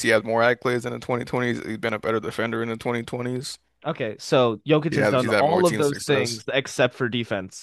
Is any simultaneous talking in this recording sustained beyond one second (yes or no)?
yes